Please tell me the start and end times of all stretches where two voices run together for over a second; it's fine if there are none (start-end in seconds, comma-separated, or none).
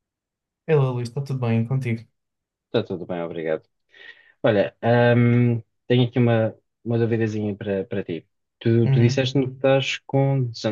none